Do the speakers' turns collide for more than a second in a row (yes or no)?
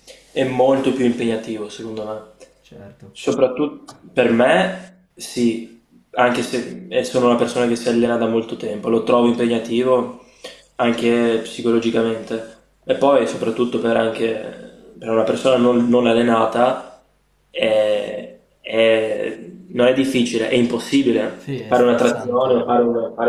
yes